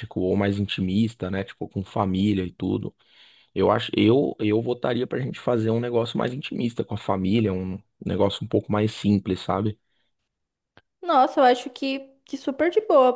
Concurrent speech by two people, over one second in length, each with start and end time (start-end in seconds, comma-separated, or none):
none